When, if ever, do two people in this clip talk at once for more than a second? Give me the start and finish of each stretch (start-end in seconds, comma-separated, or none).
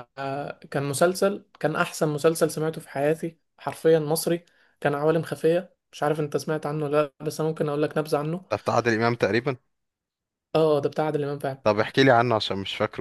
none